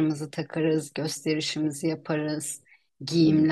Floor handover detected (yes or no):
no